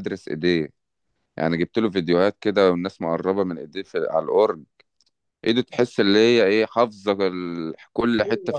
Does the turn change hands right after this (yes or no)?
yes